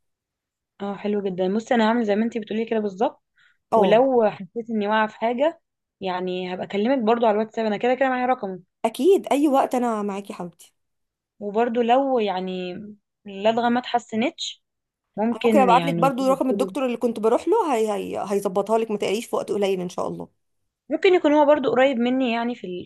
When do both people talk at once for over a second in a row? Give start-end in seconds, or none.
15.3-16.8